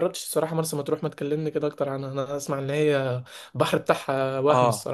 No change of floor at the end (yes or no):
no